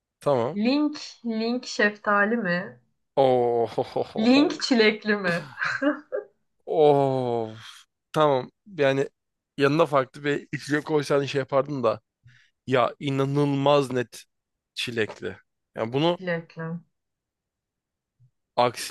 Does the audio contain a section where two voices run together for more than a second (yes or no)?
no